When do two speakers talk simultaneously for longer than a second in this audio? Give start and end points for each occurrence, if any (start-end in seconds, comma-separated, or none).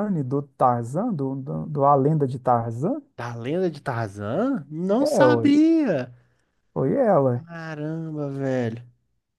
none